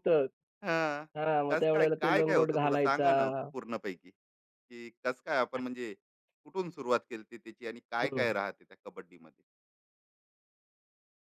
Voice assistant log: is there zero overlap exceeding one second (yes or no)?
no